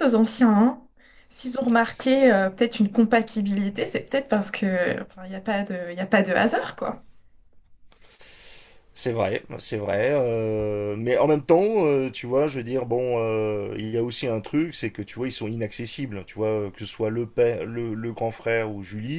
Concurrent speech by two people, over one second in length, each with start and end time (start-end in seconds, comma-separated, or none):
none